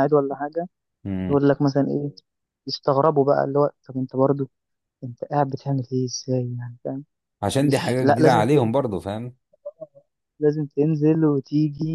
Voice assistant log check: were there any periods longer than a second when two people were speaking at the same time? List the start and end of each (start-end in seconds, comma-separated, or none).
7.6-8.9